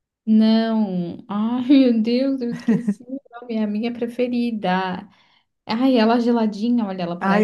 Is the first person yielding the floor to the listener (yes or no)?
yes